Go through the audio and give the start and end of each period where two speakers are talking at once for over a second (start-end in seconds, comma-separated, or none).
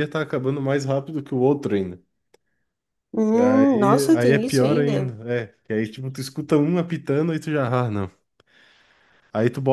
3.3-5.1